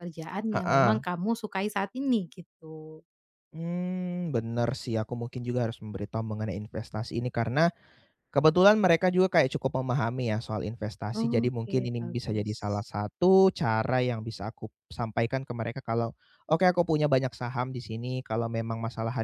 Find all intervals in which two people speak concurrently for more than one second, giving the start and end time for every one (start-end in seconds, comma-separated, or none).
11.2-12.9